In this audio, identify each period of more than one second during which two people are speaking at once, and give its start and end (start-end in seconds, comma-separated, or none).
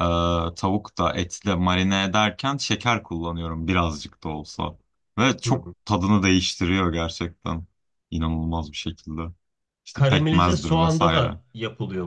9.9-11.4